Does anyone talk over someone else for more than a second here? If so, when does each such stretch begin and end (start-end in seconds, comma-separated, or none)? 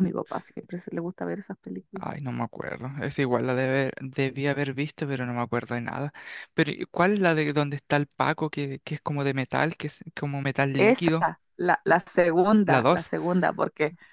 none